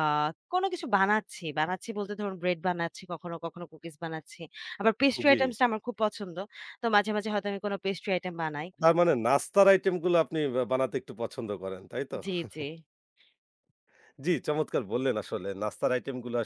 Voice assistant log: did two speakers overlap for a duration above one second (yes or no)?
no